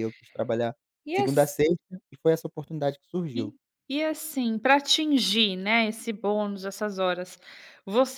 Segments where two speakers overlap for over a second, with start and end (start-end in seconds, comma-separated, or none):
none